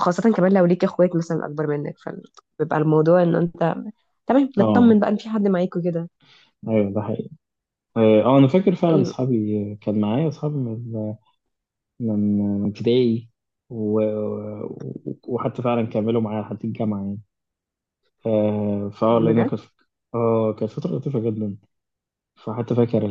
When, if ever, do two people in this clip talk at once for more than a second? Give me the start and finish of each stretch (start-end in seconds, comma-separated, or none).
none